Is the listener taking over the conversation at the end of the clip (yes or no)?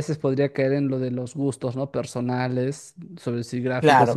no